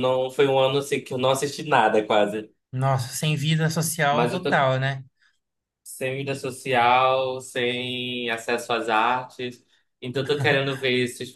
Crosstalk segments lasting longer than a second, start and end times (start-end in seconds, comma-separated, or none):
none